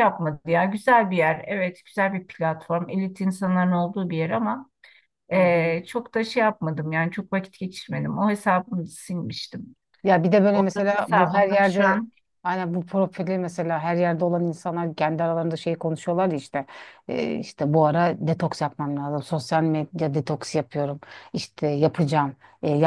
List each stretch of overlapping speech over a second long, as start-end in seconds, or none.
10.5-12.0